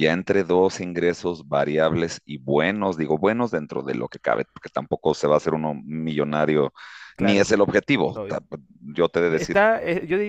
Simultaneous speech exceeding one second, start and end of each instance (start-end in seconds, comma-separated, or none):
none